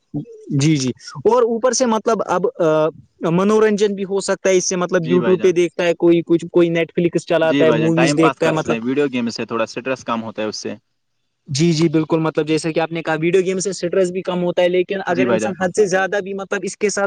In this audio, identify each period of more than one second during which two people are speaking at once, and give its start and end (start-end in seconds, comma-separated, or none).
7.5-8.8